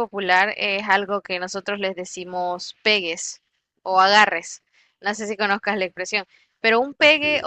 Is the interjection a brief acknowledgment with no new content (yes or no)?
yes